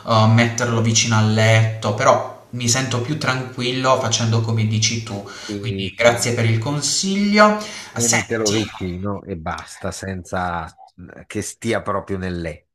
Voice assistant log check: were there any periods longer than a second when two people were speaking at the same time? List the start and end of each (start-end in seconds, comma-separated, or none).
none